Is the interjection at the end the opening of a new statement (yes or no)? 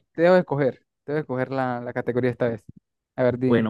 yes